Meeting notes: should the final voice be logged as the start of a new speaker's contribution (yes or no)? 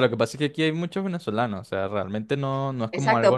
yes